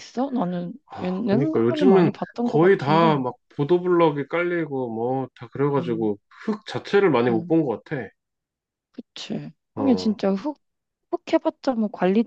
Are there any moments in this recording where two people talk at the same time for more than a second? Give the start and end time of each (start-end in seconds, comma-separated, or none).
0.9-3.2